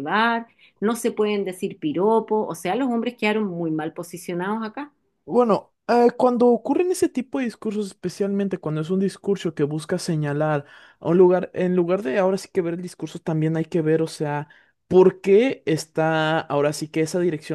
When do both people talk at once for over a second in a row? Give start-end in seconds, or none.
none